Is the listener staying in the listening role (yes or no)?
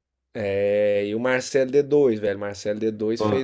yes